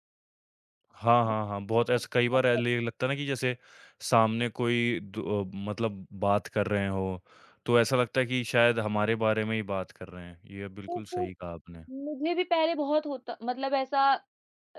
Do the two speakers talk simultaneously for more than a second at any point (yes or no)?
yes